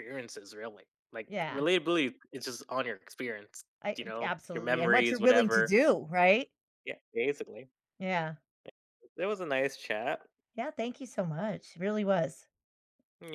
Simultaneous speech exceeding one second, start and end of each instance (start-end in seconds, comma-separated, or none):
3.8-5.7